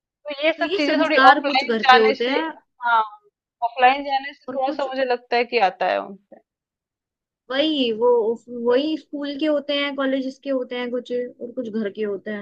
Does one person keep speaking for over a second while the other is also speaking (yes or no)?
yes